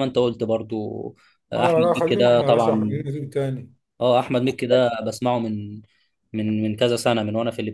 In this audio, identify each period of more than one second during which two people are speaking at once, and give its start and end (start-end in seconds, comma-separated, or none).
1.6-3.0